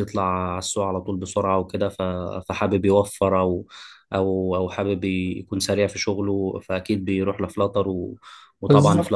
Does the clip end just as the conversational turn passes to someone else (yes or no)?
no